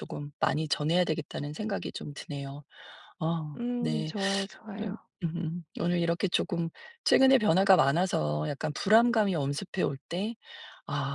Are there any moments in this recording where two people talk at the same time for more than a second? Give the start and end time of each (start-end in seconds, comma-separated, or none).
none